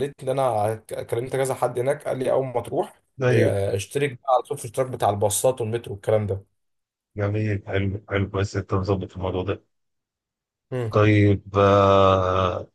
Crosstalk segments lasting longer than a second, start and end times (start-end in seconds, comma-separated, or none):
none